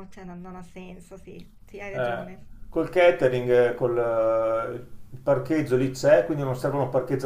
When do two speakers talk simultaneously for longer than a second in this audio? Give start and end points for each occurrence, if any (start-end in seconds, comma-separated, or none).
none